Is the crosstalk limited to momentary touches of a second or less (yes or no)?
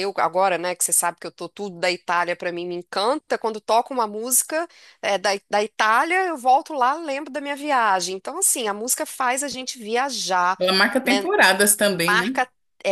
yes